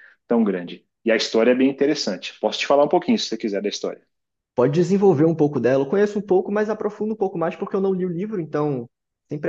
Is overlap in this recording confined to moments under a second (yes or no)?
yes